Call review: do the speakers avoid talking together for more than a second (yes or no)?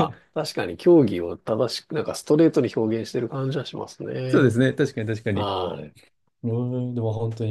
yes